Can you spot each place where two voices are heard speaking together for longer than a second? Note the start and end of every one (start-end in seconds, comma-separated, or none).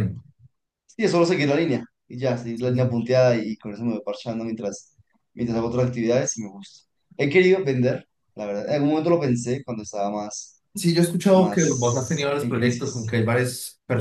11.3-13.2